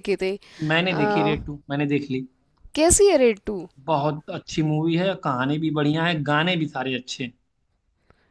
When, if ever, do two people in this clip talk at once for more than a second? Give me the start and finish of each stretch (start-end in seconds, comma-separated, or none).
none